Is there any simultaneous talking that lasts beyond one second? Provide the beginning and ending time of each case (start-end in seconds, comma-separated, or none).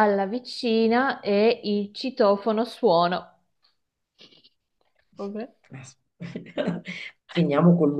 none